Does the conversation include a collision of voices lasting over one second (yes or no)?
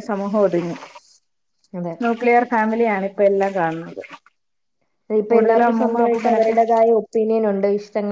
no